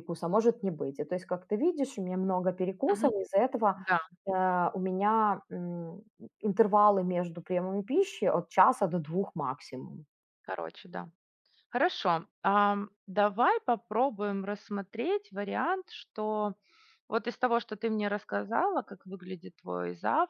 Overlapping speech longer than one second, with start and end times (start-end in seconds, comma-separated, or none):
none